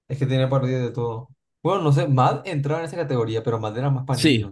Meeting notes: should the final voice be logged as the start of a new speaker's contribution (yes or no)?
yes